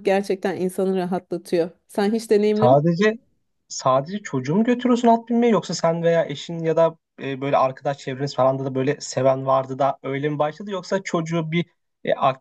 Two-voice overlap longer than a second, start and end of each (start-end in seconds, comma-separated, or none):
none